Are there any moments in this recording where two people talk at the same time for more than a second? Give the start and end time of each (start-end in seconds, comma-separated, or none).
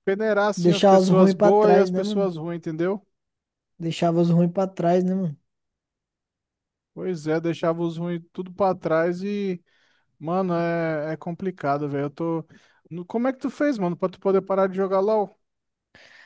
0.6-2.3